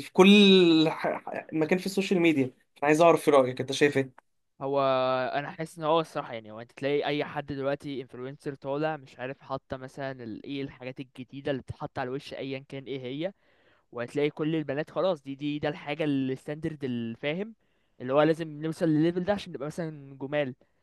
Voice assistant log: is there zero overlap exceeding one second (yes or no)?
yes